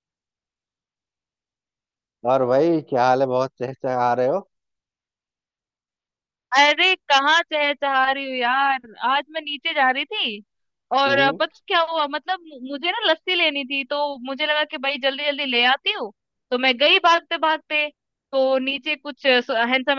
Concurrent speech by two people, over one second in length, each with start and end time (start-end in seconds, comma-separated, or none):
none